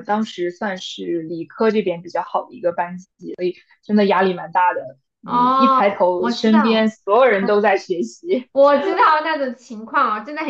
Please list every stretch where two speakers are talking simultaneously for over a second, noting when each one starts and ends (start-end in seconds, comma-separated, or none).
5.2-6.9